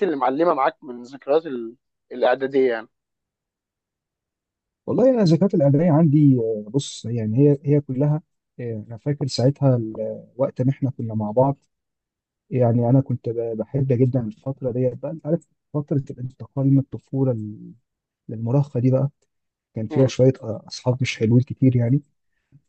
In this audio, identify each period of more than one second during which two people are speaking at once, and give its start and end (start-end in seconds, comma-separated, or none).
none